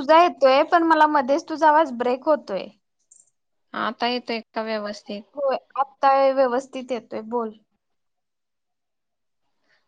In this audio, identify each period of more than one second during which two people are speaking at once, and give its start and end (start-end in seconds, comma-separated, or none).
none